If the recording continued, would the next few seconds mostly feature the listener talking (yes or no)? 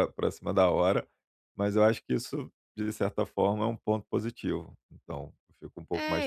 yes